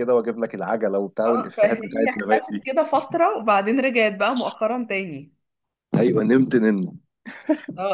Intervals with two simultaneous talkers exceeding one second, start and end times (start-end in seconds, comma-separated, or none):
1.2-2.6